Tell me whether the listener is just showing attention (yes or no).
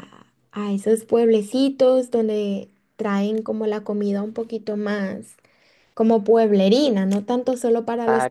no